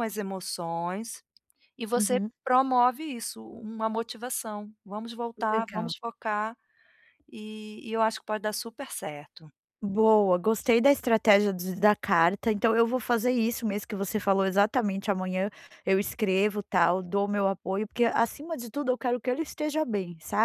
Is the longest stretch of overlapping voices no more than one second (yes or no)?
yes